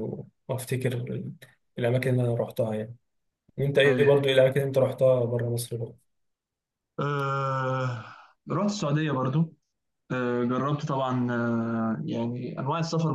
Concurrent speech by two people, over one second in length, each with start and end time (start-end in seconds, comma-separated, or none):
none